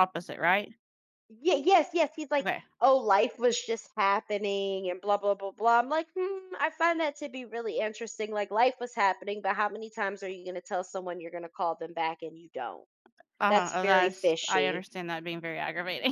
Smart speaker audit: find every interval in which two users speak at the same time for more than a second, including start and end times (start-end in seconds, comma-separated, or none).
13.5-14.8